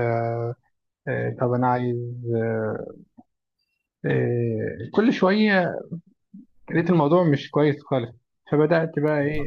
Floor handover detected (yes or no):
no